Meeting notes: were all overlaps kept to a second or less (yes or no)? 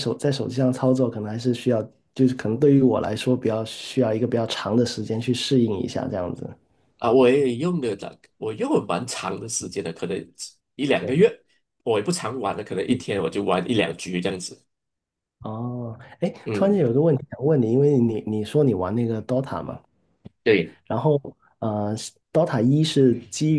yes